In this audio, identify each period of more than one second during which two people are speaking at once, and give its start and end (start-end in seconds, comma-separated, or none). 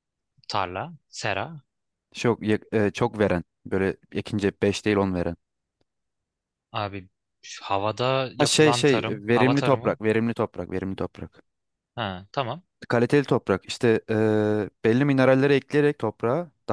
8.4-10.0